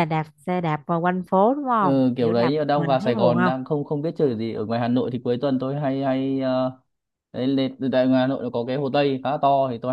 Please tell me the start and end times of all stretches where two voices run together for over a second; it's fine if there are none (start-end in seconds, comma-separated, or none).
1.8-3.7